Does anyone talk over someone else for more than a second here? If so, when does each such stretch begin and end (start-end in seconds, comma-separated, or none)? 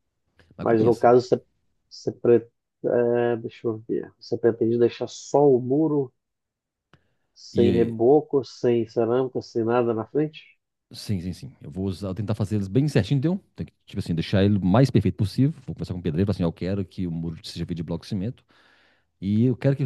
none